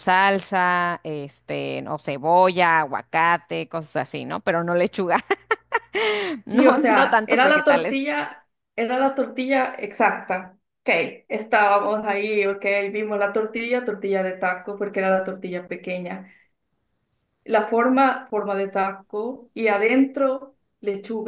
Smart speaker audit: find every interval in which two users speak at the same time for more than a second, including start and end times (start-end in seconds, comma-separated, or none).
6.5-8.1